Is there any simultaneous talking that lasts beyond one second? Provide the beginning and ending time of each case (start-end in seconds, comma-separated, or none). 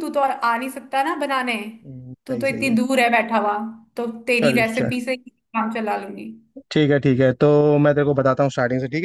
none